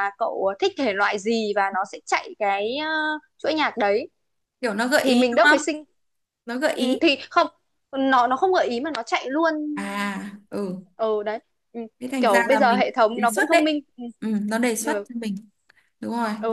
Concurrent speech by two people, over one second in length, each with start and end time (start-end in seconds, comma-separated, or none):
12.2-13.8